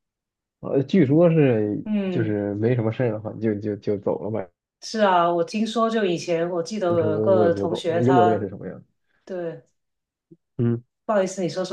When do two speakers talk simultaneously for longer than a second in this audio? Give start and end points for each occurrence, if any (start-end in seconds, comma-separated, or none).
6.9-8.5